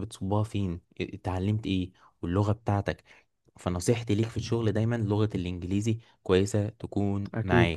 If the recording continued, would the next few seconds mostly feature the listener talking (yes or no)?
yes